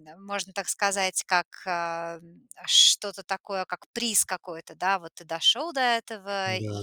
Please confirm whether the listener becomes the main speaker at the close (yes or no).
no